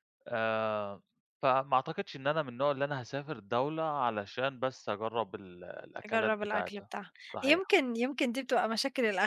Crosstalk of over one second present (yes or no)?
yes